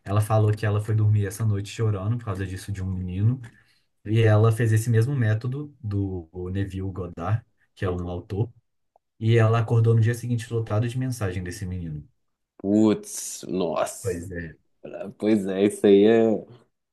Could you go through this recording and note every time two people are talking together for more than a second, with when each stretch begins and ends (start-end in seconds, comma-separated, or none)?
none